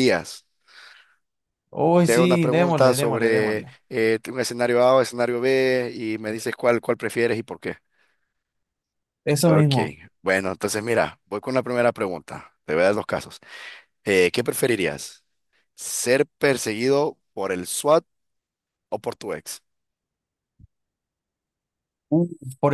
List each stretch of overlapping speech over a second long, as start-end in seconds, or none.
2.0-3.7